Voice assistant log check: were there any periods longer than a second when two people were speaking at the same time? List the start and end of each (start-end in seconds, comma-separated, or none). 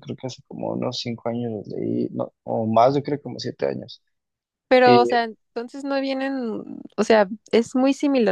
none